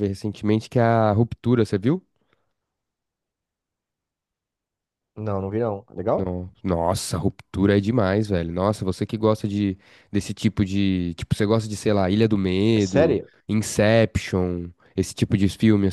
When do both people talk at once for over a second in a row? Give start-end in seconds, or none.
none